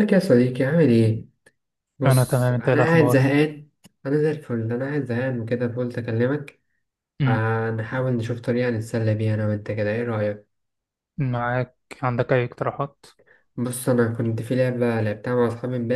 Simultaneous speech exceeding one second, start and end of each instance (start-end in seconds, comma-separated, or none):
2.0-3.3